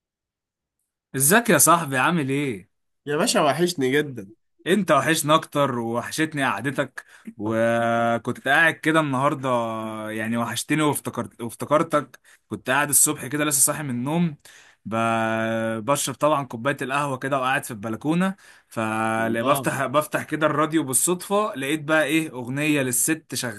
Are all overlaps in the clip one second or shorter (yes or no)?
yes